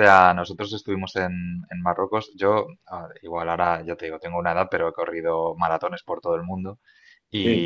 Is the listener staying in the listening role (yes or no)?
yes